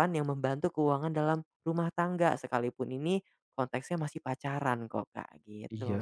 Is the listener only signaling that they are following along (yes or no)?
no